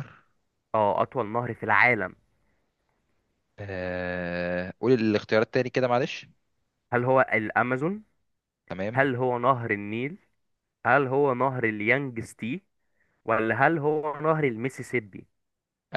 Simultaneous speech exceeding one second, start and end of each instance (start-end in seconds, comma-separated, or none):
none